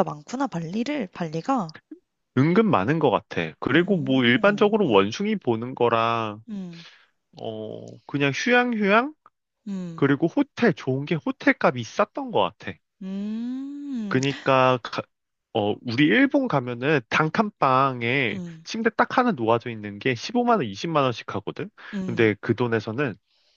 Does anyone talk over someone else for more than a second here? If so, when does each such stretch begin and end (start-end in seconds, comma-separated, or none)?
3.7-5.1